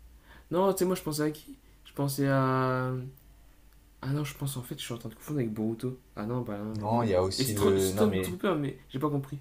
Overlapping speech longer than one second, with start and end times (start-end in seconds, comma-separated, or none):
6.8-8.3